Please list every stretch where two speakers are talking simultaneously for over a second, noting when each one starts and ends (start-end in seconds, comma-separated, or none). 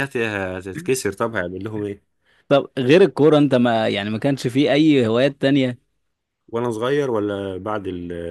none